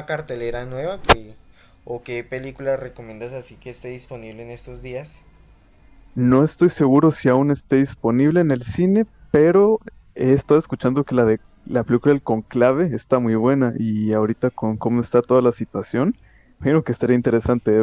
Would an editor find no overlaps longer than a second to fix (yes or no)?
yes